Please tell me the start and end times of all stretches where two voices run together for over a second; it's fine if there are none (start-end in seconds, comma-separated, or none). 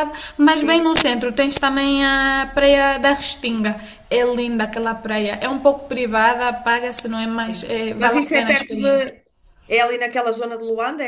7.5-9.1